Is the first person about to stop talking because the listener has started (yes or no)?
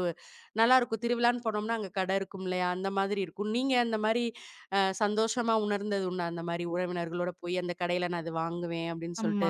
yes